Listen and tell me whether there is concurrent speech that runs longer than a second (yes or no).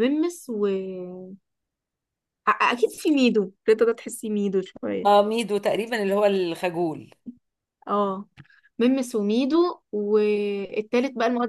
no